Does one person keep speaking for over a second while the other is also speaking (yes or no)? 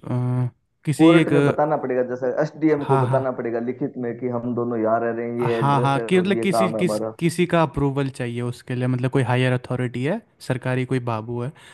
yes